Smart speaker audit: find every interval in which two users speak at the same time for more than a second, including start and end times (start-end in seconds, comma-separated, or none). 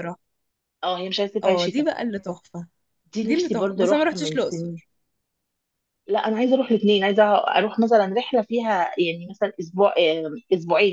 3.2-4.8